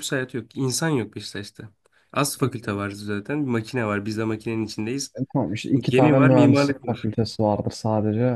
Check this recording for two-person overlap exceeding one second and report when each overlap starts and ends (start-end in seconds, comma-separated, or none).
5.9-7.1